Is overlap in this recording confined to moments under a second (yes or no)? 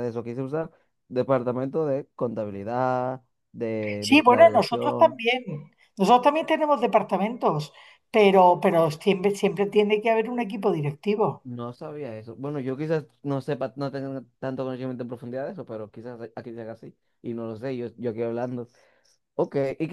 no